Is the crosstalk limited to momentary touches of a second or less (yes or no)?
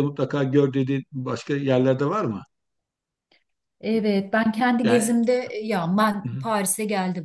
yes